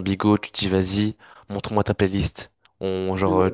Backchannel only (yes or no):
yes